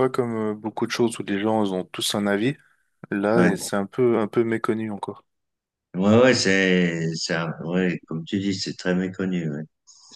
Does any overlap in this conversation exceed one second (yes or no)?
no